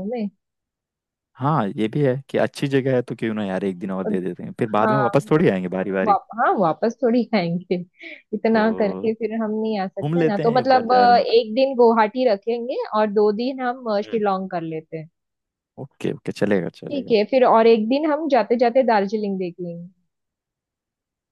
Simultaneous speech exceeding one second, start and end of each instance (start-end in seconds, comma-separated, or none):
10.0-11.4